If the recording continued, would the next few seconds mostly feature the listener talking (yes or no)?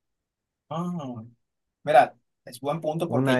yes